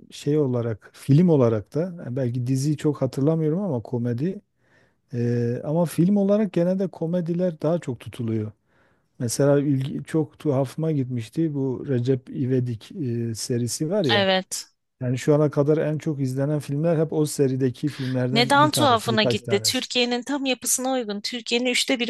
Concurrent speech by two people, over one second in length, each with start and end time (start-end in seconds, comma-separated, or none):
18.3-19.9